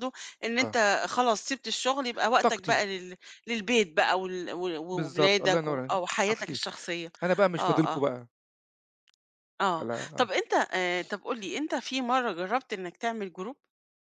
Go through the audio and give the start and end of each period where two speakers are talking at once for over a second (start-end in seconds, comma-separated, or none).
4.9-6.6